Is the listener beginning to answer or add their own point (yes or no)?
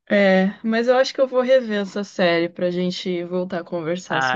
yes